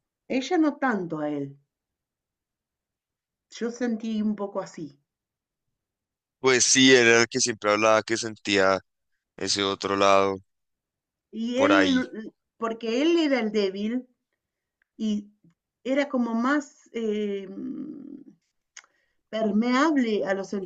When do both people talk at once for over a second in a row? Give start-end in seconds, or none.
none